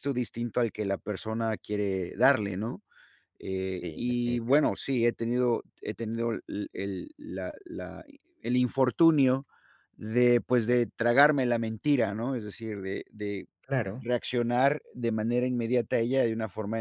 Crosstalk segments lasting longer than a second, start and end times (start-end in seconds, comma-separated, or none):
3.6-4.8